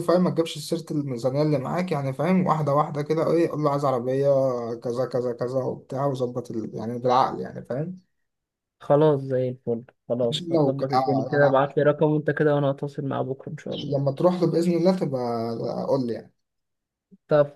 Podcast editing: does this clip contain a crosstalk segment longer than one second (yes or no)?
yes